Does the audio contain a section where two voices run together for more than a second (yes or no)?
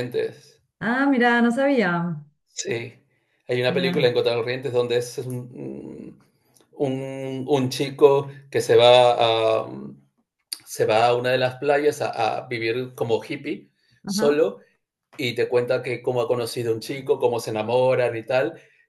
no